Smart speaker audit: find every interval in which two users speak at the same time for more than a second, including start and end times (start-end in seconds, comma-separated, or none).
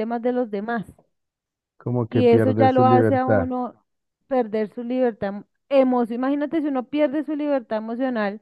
2.1-3.5